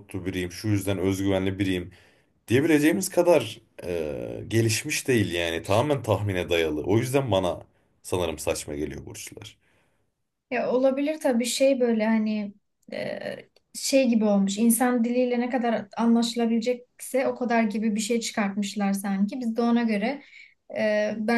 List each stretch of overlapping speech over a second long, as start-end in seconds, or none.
none